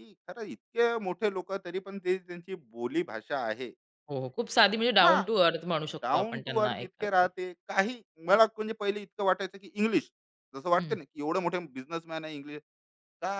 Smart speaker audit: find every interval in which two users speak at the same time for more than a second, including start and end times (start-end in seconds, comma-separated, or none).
6.0-7.3